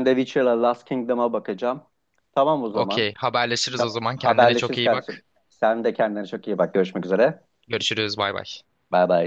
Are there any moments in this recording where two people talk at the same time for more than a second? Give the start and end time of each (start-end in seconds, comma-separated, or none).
3.8-5.2